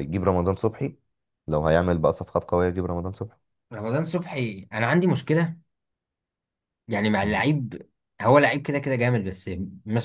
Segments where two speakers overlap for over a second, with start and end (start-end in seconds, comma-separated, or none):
none